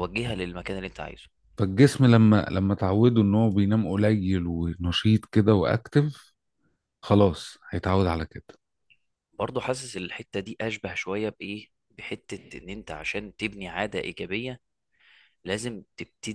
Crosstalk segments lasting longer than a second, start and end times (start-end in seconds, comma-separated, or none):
none